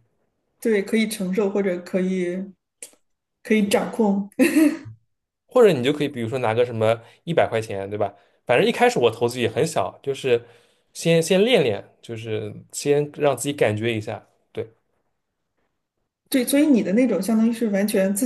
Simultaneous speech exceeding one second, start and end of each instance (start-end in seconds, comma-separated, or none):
none